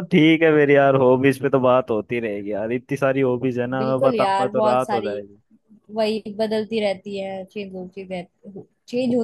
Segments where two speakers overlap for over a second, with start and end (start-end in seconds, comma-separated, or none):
3.8-5.1